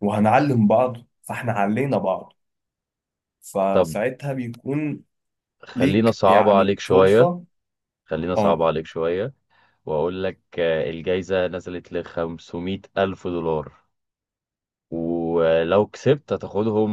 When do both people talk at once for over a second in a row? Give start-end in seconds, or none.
5.8-7.3